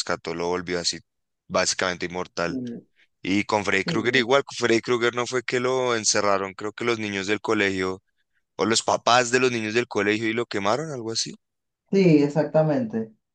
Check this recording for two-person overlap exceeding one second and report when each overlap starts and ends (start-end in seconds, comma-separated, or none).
none